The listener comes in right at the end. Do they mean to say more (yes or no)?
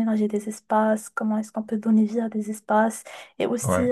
no